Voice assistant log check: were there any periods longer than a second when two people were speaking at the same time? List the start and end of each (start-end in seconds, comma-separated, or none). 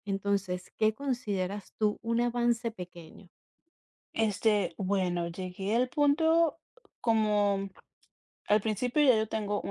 none